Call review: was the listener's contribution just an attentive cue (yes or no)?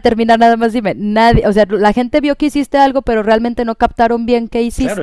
no